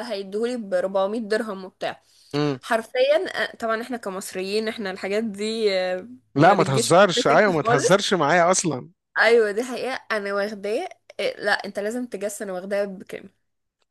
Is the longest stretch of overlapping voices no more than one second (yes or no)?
no